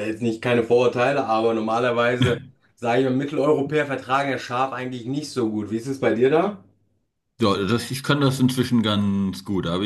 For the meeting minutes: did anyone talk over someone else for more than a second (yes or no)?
no